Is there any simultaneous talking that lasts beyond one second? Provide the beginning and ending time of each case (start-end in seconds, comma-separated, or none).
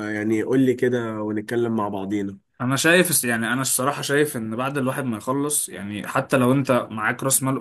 none